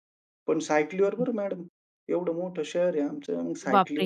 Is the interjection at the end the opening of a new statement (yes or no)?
yes